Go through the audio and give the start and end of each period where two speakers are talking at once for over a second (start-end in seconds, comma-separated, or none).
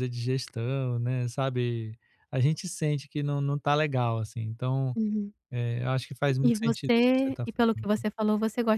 6.4-7.7